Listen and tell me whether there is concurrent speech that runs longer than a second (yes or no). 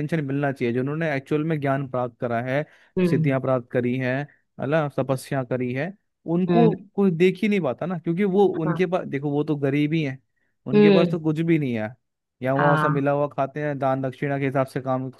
no